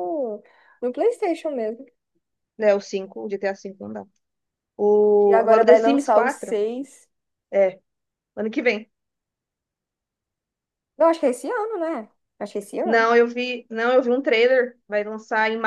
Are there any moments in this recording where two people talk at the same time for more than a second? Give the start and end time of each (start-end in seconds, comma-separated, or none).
5.2-6.6